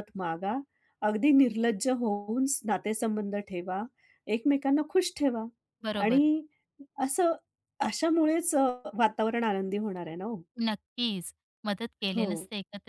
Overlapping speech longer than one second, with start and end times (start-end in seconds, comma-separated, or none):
none